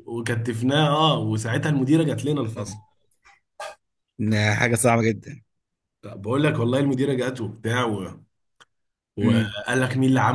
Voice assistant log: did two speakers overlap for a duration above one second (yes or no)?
no